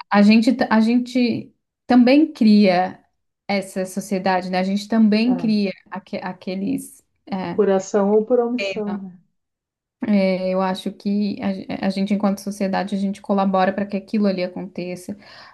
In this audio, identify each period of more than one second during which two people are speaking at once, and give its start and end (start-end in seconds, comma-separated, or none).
none